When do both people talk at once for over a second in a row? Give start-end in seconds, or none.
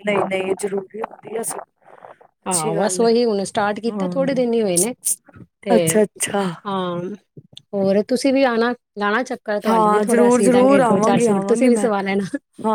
9.7-11.9